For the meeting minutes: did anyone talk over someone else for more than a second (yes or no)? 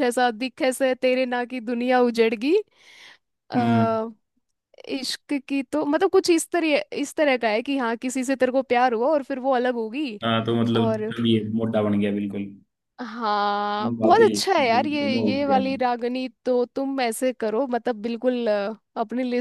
yes